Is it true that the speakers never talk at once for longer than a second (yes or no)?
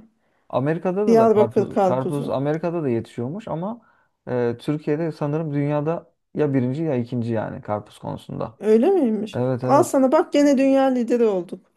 no